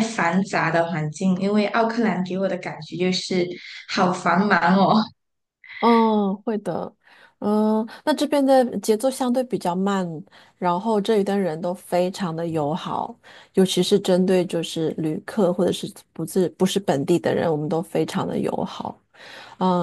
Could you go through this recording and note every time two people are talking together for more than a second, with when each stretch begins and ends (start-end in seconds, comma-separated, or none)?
none